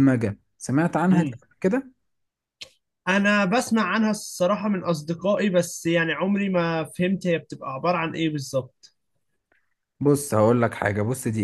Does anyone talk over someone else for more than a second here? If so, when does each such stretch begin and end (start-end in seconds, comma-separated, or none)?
none